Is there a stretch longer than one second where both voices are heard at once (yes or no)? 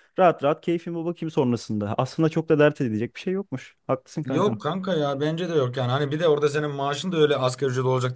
no